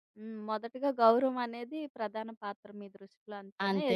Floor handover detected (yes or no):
no